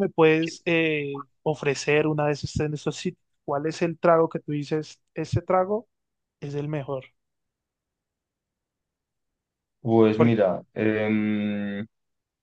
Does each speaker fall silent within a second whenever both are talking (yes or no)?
yes